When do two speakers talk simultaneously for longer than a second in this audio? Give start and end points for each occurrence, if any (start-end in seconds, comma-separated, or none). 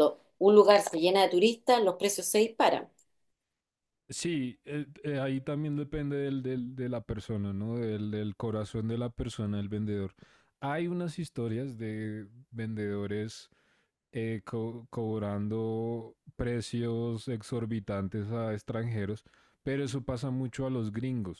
none